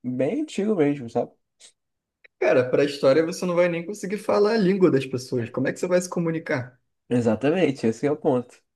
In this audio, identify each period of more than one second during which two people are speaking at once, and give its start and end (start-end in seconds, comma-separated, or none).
none